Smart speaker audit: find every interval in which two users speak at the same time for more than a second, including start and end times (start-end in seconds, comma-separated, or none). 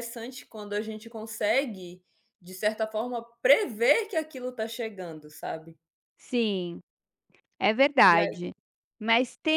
none